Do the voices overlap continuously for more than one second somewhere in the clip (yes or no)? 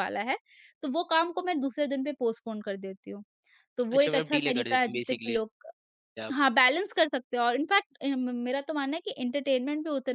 yes